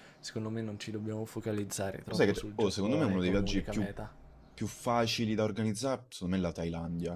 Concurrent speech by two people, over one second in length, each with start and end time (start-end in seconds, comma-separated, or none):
2.0-3.9